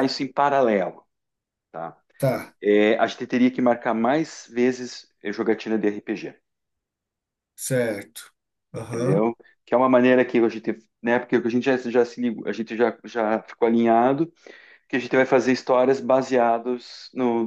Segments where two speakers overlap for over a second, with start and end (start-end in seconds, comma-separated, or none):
none